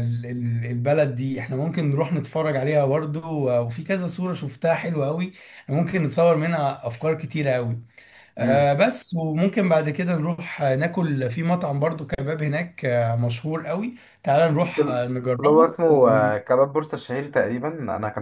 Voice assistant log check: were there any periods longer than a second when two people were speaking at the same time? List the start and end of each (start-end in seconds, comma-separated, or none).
14.6-16.2